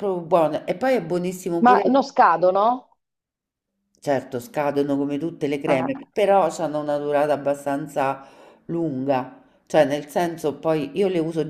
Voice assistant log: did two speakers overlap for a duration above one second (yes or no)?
no